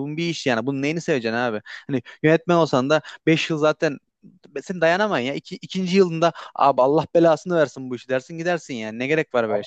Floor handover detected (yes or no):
yes